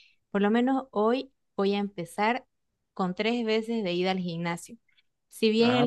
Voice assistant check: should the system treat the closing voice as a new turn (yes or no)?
no